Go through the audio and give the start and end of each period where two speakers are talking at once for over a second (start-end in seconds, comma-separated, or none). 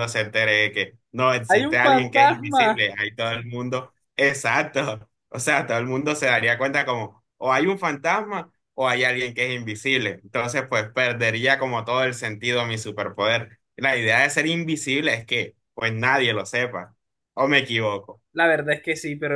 1.5-2.9